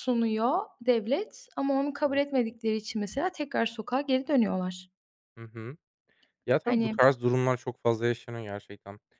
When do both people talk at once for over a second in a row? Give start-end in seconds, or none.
none